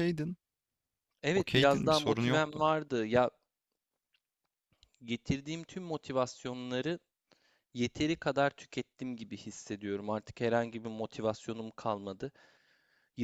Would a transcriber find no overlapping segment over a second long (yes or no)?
no